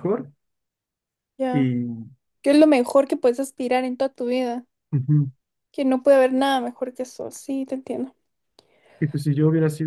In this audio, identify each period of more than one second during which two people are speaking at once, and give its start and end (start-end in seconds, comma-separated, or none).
none